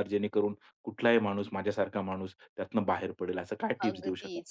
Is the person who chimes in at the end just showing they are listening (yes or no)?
no